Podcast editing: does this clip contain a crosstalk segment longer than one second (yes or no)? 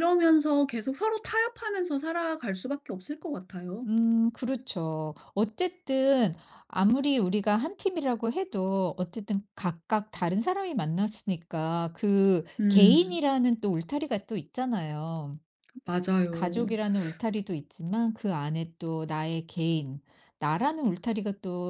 no